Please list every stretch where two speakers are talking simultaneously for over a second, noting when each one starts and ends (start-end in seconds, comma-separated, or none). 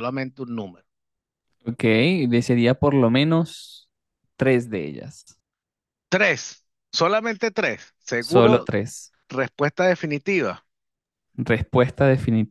none